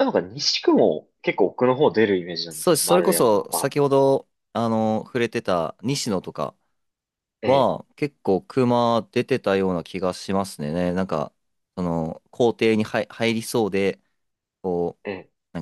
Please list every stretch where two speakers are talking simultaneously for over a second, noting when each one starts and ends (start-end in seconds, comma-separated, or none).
2.5-3.7